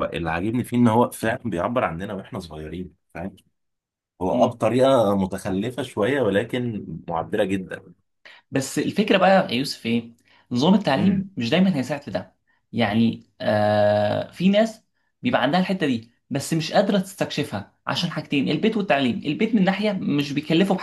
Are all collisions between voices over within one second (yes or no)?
yes